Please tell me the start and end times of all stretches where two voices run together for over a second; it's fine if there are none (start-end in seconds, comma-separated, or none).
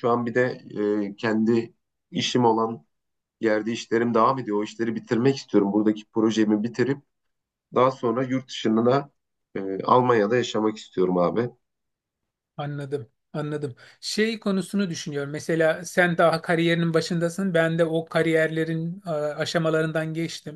none